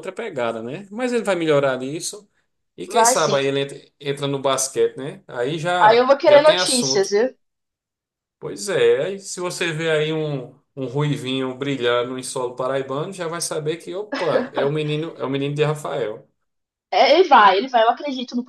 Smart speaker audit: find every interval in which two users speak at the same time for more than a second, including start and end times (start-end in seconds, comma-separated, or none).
5.8-7.1